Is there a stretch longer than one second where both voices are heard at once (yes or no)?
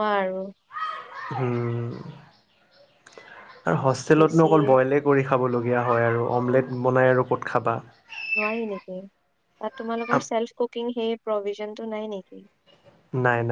no